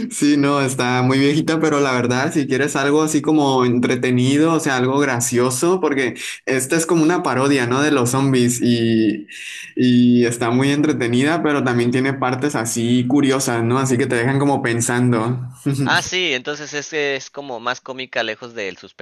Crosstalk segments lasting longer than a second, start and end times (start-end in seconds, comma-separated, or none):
none